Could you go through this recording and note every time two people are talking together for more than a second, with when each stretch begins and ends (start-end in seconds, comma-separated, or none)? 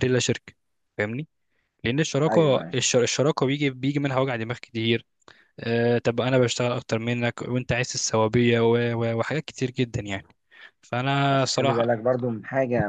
none